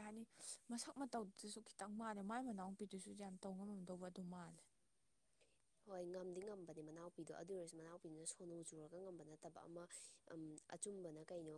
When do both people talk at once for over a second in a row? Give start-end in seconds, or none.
none